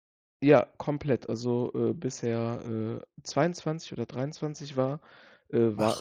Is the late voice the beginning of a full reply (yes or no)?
no